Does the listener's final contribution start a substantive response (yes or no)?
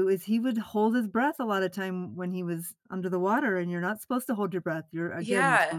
yes